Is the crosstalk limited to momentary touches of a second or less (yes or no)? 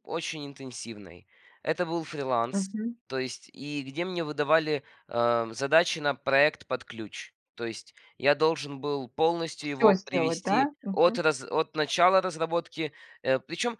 no